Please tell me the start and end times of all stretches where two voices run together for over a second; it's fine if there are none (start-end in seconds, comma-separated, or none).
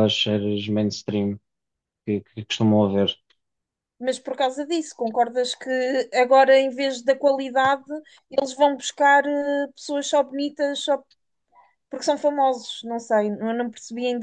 none